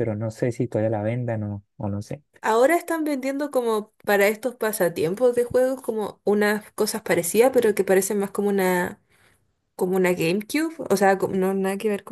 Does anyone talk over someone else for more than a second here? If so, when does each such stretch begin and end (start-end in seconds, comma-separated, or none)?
none